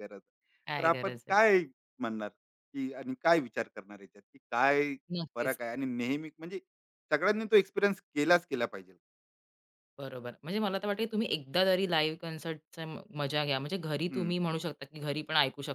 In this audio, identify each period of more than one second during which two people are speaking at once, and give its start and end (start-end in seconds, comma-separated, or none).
none